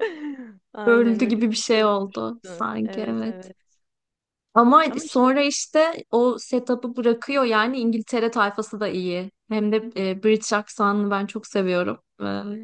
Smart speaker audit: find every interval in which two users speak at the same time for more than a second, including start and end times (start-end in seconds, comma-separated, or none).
0.8-3.5